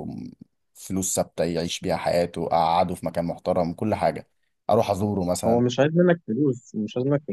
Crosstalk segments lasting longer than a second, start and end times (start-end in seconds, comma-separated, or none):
none